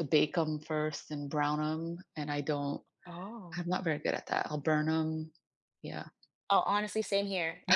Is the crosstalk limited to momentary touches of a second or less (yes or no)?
yes